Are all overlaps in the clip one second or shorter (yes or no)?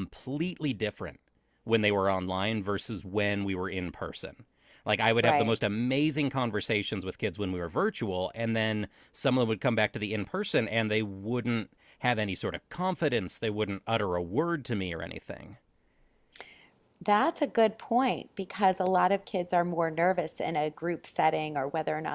yes